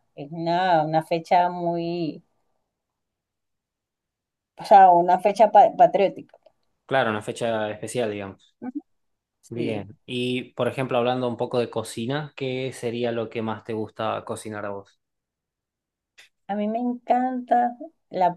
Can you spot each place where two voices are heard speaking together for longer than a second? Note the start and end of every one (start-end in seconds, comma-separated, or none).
none